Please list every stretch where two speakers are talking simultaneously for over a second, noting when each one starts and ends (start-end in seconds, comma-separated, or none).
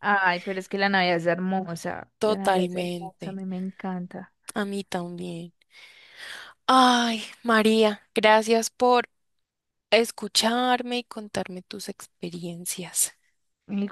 2.2-3.4